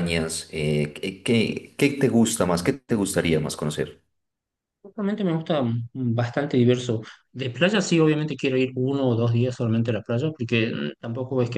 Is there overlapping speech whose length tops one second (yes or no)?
no